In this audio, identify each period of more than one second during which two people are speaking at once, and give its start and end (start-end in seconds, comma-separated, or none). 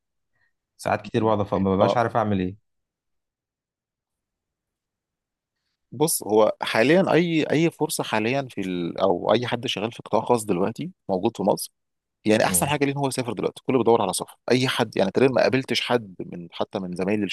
none